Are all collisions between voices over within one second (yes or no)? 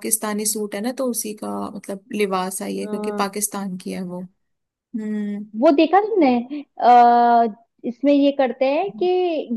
yes